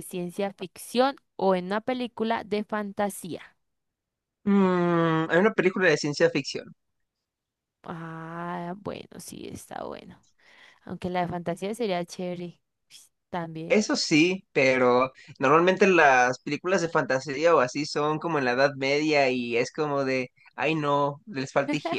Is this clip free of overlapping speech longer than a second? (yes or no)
yes